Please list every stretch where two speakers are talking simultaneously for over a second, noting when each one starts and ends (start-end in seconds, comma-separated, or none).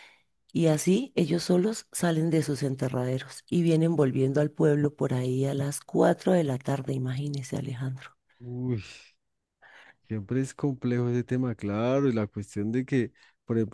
none